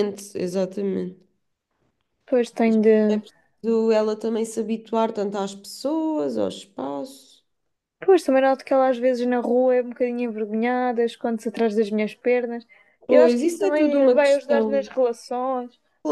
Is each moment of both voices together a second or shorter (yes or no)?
no